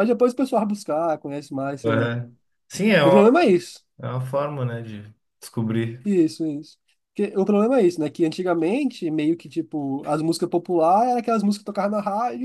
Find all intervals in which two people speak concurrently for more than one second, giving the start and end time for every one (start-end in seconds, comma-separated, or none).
none